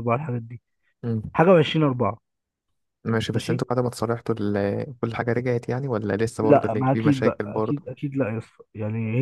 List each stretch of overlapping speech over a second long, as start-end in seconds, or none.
6.4-7.8